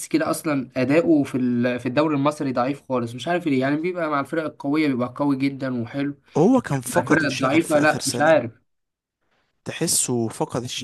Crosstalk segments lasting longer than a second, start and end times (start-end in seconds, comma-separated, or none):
7.0-8.4